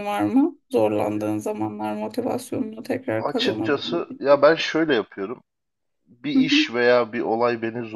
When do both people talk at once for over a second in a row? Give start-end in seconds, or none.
3.2-4.5